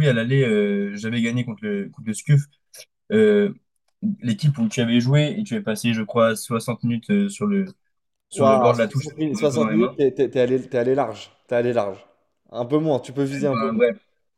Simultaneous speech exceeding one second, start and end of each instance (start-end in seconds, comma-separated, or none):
8.3-10.0